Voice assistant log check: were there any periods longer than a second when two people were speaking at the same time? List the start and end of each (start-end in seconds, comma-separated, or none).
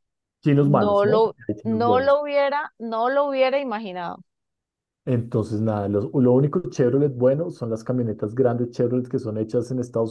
0.6-2.2